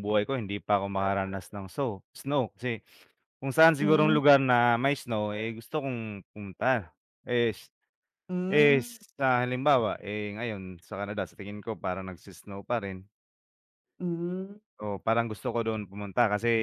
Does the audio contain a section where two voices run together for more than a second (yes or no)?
no